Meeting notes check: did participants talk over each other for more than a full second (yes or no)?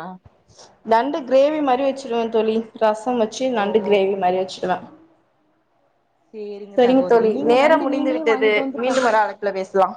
yes